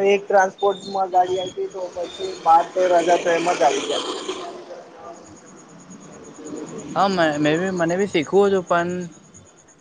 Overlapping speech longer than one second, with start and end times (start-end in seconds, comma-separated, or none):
none